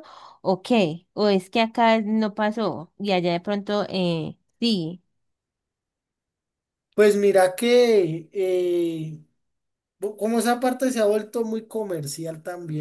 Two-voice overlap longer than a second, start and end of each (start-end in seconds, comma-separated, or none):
none